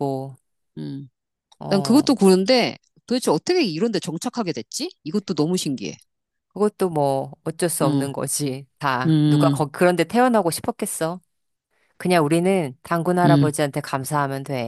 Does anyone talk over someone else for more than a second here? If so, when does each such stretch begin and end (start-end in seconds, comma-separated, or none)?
none